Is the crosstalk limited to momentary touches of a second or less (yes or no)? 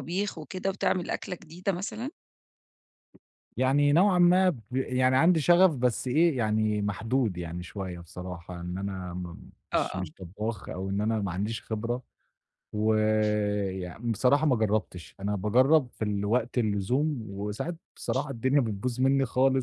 yes